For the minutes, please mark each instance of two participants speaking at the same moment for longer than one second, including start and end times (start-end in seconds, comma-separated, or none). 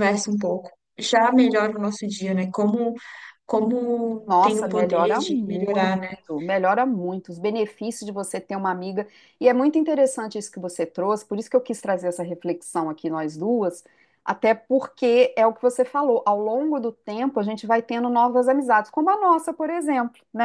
4.3-6.0